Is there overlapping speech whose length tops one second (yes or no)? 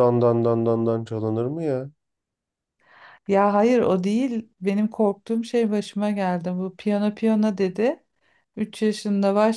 no